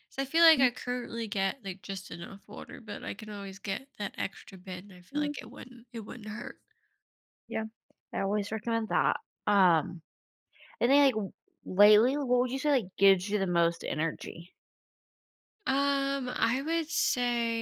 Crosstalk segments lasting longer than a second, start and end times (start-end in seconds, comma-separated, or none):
none